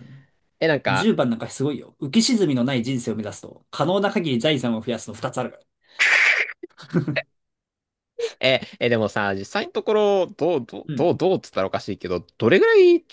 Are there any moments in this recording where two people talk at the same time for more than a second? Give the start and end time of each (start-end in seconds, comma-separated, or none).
none